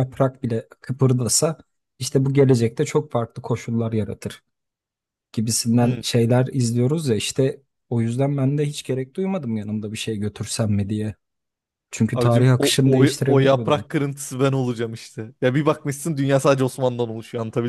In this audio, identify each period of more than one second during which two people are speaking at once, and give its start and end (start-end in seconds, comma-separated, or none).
12.1-13.8